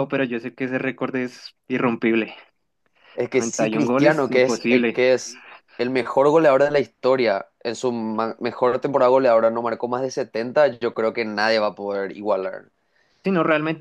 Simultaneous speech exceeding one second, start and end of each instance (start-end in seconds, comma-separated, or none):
3.3-5.0